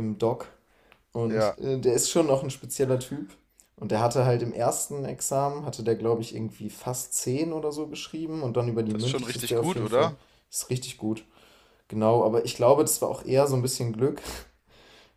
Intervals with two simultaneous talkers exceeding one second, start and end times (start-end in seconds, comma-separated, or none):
8.9-10.1